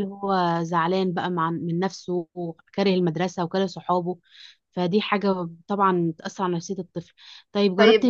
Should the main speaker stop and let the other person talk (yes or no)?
no